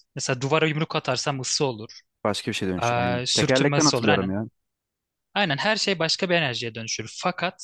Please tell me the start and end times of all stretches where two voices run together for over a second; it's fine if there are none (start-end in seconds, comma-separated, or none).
2.8-4.3